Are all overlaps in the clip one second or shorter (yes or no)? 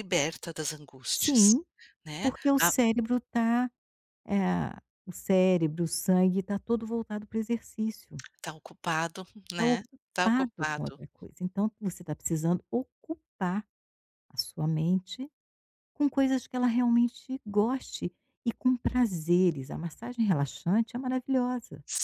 no